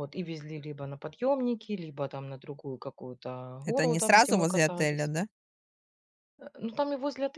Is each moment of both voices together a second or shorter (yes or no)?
no